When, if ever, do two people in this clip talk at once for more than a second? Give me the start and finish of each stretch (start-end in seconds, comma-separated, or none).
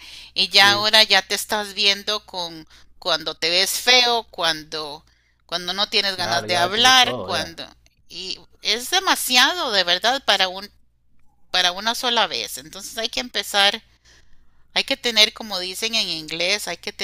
6.1-7.6